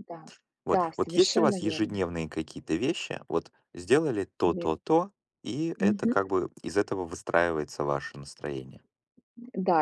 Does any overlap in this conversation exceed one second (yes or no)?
yes